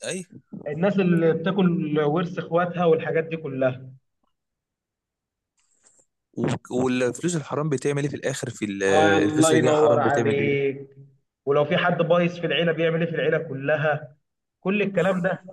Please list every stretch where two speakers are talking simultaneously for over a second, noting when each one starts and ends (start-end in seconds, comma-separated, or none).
9.2-10.5